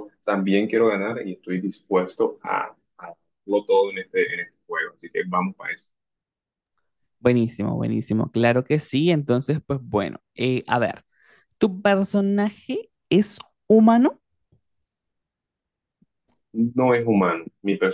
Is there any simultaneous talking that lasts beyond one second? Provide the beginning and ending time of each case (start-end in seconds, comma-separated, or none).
none